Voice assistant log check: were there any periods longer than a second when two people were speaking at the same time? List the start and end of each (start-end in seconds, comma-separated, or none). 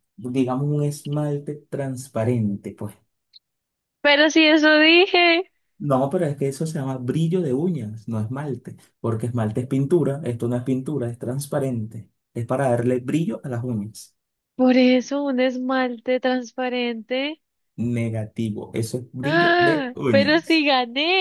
19.2-20.6